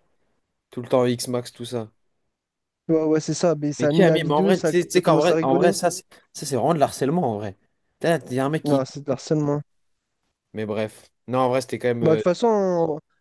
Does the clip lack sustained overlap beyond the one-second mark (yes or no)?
no